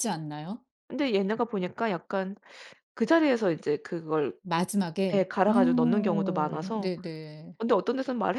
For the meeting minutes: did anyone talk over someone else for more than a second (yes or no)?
yes